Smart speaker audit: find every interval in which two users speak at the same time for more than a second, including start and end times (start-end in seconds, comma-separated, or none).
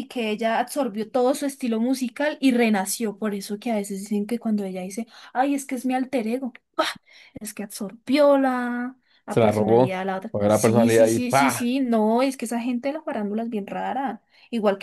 9.3-11.7